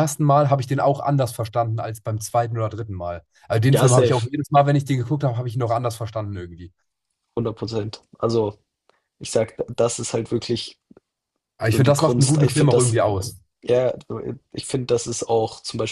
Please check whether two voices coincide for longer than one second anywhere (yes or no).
yes